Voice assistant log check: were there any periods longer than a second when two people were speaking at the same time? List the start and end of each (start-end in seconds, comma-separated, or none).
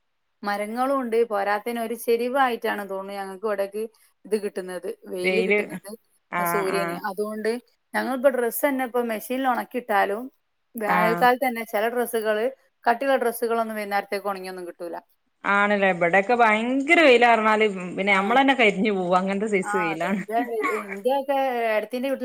none